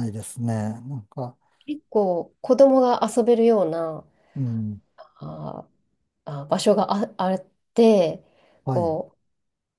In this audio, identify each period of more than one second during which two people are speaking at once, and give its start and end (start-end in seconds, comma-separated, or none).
none